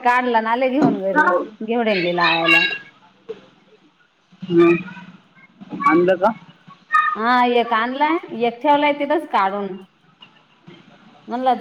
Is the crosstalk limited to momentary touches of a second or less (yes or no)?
yes